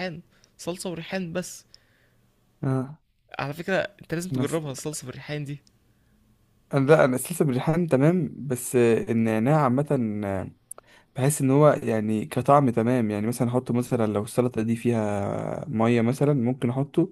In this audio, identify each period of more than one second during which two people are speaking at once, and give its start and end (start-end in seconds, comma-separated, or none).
none